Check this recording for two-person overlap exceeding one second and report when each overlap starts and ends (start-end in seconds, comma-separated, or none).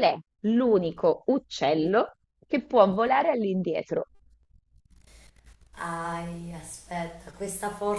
none